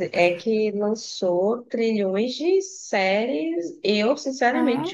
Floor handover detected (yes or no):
no